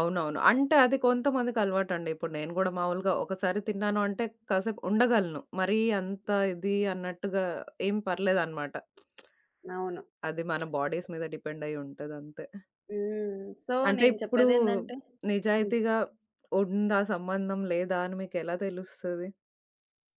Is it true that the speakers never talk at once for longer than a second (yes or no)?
yes